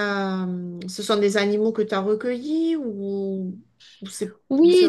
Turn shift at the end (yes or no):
yes